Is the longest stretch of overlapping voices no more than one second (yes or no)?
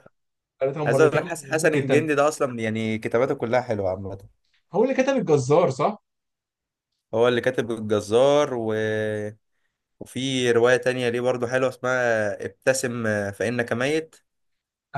no